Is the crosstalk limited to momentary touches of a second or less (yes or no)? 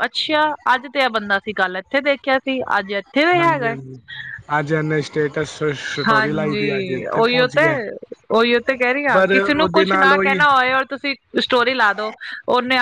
no